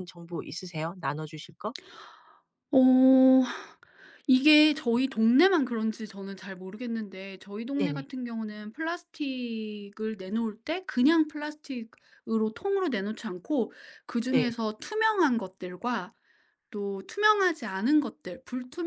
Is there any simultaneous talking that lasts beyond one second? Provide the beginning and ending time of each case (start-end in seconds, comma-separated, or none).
none